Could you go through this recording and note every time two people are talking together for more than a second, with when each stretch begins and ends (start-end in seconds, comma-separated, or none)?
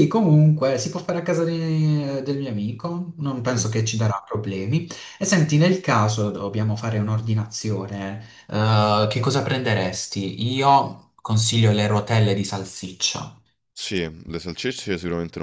none